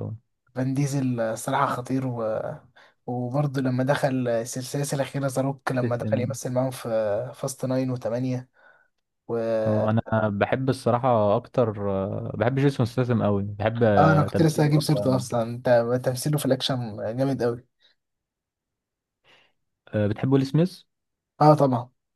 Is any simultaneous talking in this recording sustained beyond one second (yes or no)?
yes